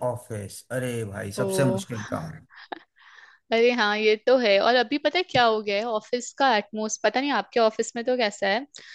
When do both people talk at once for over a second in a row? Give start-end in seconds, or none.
none